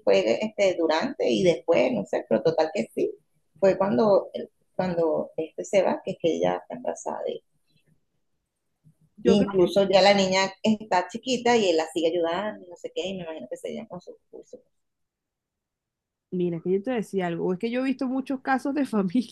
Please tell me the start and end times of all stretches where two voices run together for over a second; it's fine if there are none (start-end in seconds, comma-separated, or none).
none